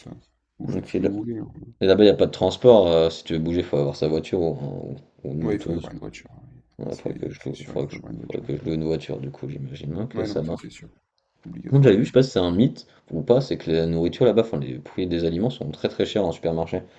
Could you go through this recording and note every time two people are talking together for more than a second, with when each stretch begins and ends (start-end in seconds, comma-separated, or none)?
6.8-8.5